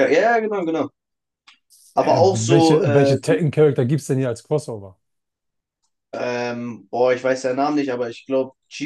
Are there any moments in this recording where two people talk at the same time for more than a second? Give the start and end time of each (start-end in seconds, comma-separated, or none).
2.0-3.4